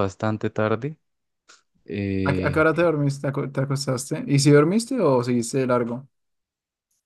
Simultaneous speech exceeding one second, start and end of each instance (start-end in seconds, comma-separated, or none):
none